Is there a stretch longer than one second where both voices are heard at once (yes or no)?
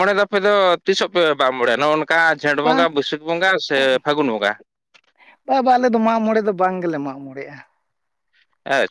no